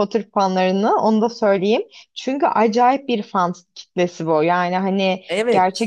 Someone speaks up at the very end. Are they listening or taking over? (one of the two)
listening